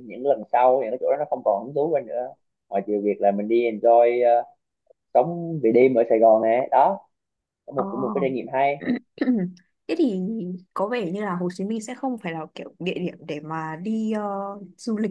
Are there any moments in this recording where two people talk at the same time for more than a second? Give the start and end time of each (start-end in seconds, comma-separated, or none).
none